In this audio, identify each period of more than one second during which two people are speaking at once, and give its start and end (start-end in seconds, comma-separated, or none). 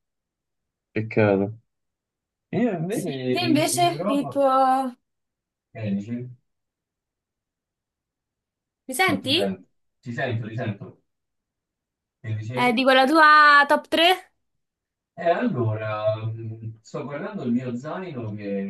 2.9-4.4